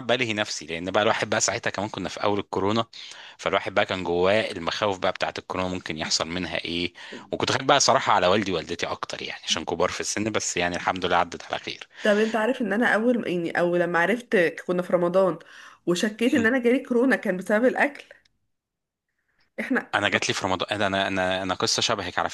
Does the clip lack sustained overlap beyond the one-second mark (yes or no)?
yes